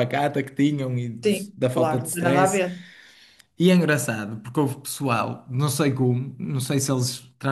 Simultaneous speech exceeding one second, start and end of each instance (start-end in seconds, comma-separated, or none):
1.2-2.6